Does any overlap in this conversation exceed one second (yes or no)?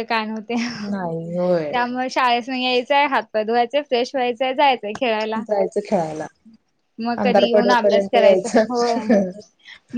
yes